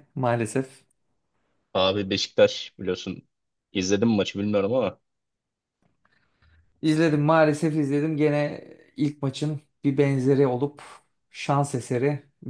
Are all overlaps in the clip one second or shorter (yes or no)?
yes